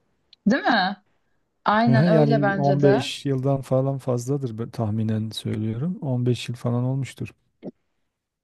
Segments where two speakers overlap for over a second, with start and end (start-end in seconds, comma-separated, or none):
1.9-3.1